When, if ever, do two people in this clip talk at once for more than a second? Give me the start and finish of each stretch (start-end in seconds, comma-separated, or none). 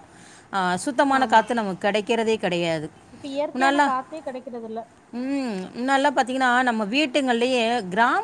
none